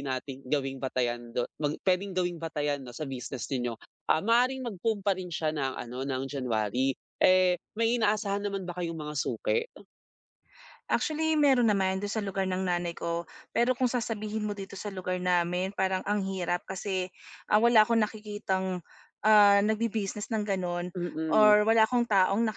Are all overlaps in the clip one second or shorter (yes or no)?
yes